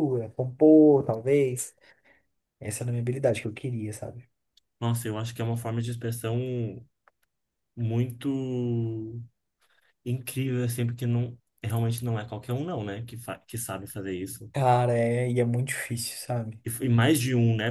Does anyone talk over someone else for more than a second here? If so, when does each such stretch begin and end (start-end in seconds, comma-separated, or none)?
none